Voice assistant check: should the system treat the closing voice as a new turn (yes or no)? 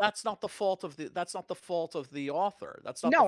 yes